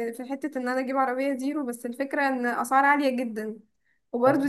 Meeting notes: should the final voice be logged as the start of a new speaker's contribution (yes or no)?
no